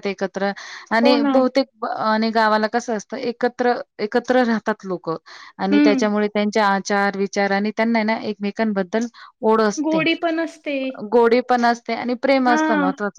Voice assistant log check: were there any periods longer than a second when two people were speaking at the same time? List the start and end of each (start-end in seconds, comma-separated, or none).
none